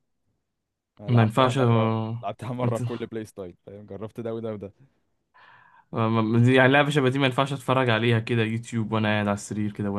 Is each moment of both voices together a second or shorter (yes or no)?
yes